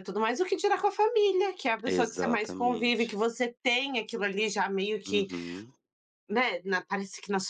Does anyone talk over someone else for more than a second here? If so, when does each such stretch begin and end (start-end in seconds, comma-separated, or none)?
1.9-3.1